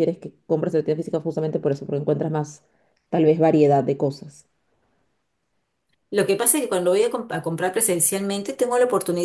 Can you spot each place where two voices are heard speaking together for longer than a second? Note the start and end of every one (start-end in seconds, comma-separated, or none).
none